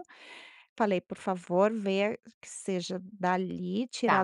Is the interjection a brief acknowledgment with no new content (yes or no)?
yes